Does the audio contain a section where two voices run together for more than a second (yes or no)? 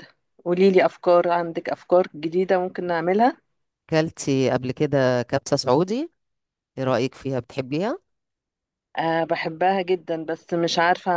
no